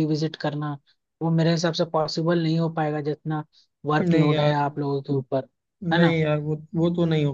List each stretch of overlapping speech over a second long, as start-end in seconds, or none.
none